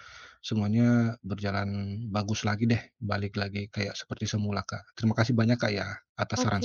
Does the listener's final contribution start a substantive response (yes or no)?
yes